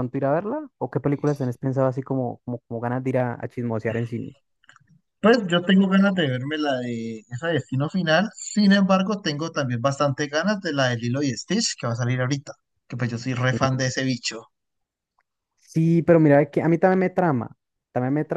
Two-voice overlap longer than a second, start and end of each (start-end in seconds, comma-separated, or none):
none